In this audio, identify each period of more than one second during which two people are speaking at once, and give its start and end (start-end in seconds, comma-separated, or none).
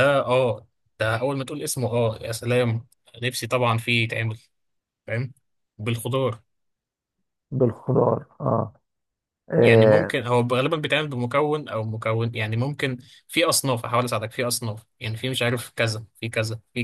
none